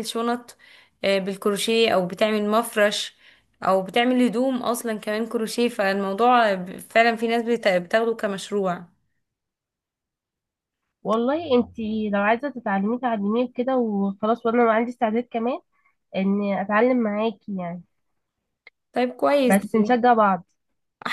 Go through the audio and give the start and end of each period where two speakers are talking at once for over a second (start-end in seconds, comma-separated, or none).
none